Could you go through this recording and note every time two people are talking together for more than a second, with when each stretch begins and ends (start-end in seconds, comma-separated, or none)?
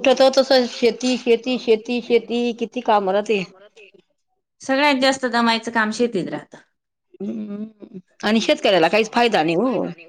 none